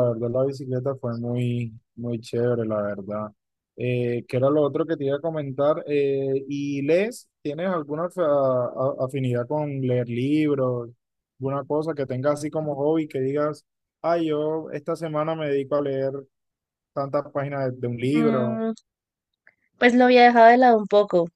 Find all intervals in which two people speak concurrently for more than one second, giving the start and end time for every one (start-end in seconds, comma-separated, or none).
none